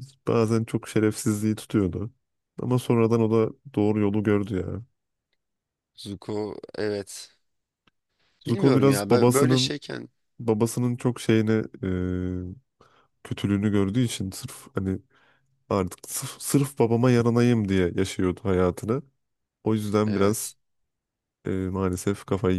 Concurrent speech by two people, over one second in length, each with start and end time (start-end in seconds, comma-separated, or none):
8.5-9.8